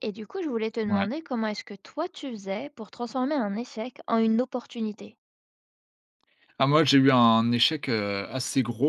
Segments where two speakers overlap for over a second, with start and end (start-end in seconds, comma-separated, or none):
none